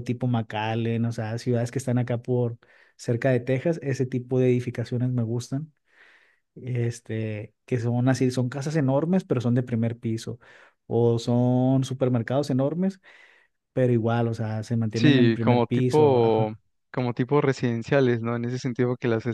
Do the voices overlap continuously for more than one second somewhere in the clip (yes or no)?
yes